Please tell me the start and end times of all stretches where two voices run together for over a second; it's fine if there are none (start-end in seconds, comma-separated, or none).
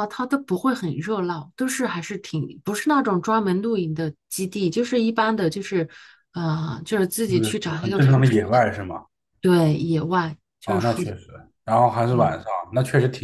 7.3-8.6